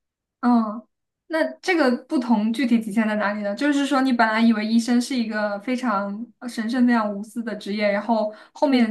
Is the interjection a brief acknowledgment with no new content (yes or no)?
yes